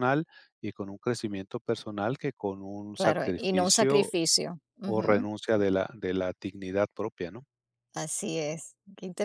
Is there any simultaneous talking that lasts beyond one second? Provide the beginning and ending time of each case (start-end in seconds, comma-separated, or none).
2.9-4.1